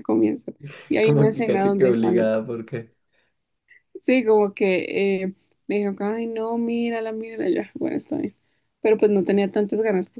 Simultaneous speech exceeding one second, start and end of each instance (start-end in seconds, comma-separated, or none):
1.0-2.4